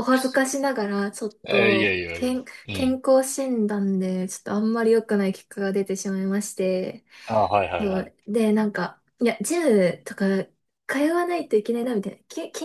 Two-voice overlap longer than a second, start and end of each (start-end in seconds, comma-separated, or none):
1.5-3.0